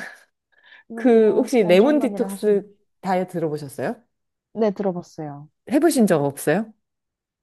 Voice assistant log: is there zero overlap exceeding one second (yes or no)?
no